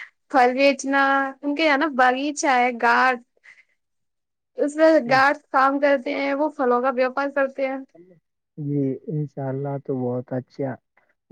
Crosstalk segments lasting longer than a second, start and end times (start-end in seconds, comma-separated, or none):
none